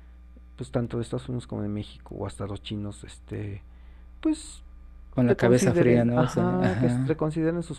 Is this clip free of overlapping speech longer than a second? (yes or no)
no